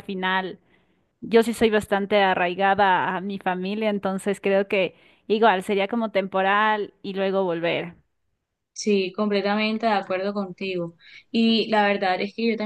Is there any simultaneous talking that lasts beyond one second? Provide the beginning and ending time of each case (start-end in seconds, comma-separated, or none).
none